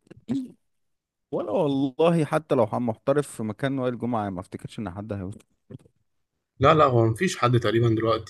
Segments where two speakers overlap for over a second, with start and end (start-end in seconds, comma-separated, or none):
none